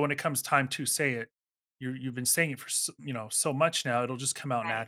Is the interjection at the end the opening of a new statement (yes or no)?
no